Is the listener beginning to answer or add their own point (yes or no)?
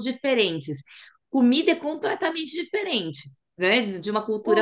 yes